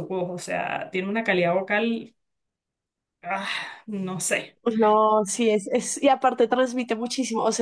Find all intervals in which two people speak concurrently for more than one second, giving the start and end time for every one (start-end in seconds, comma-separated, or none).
none